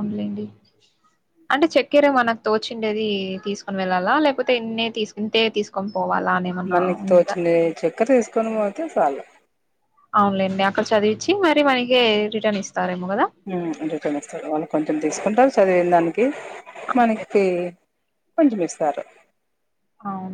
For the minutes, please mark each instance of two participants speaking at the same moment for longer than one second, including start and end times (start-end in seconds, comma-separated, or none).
none